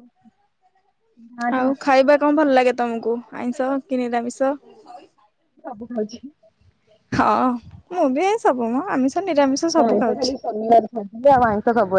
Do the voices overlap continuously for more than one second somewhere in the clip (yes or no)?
yes